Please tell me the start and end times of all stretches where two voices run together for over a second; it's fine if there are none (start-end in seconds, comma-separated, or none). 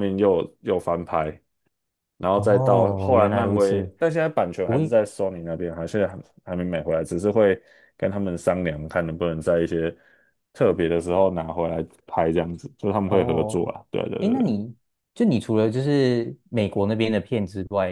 2.3-3.9